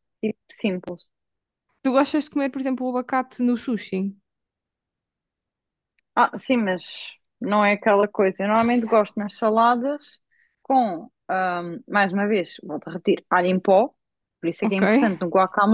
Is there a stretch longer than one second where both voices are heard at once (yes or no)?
no